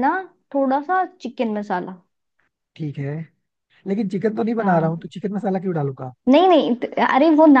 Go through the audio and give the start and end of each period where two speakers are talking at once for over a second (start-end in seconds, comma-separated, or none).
none